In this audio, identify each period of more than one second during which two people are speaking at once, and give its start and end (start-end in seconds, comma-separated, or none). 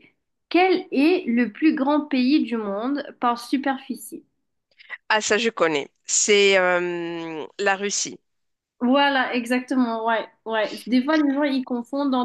none